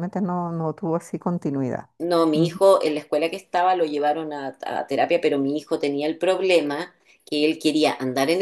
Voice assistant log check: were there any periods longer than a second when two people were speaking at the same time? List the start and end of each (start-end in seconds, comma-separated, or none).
none